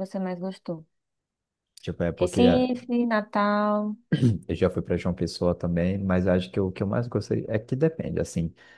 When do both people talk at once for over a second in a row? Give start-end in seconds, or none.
none